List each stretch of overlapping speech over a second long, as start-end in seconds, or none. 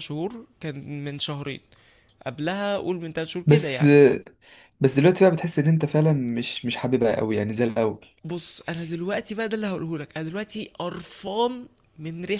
none